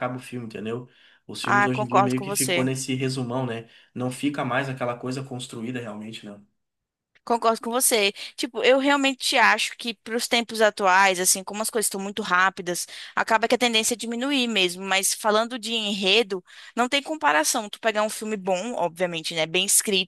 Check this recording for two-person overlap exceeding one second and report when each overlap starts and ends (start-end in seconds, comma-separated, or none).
1.4-2.7